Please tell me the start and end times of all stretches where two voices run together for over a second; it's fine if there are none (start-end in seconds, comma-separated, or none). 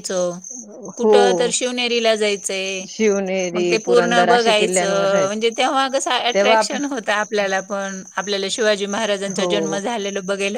3.5-5.3